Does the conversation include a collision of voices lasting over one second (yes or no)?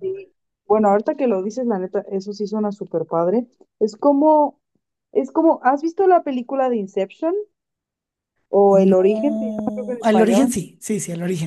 yes